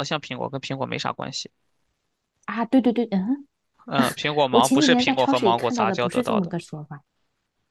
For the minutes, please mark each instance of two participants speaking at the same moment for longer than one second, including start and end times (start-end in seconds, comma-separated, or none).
4.5-6.5